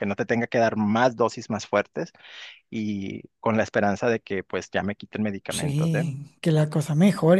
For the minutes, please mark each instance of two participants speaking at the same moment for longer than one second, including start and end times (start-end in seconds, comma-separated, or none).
none